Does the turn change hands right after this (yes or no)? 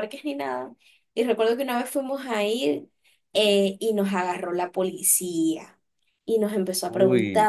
no